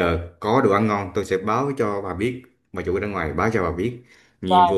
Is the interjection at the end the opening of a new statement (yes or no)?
no